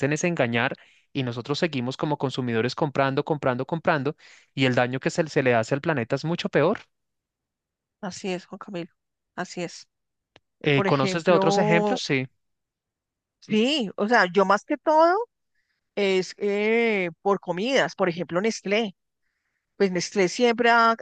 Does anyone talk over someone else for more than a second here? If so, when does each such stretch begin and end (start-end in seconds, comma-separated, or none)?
10.7-12.0